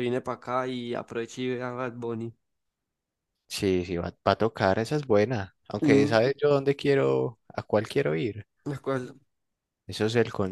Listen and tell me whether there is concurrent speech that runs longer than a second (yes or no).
no